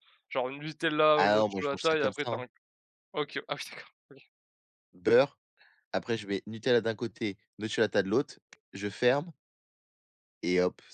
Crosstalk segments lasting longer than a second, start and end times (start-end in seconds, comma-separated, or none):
1.1-2.4